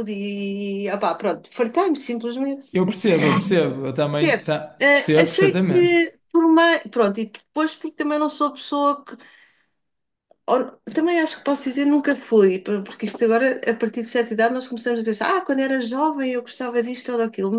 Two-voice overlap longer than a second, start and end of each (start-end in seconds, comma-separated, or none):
4.2-6.0